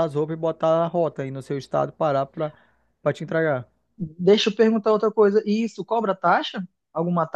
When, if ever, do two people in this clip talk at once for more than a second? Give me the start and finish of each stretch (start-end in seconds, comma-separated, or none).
none